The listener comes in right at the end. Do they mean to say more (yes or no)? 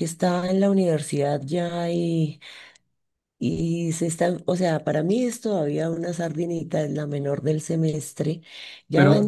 yes